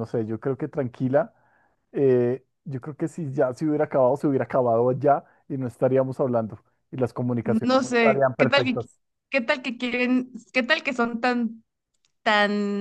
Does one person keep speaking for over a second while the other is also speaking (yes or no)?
yes